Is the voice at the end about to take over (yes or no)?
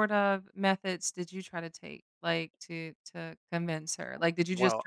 no